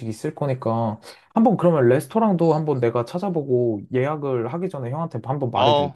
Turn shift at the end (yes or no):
yes